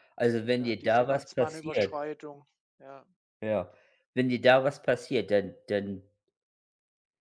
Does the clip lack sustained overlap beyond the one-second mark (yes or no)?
no